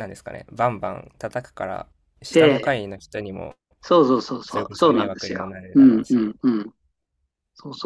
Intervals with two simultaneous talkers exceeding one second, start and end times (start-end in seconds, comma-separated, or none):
4.5-6.3